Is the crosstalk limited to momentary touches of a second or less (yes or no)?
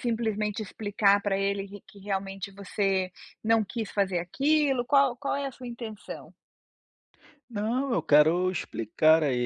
yes